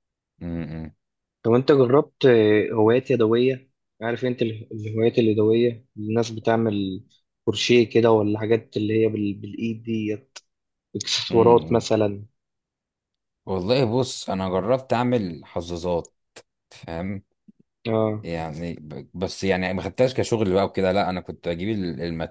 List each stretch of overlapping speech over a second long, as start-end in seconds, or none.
none